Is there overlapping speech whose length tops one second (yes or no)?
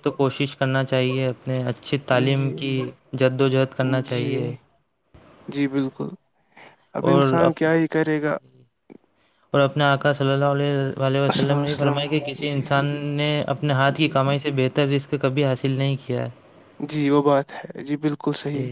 no